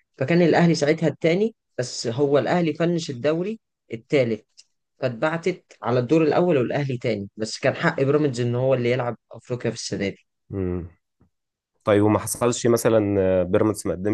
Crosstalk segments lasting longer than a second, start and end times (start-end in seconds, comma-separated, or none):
none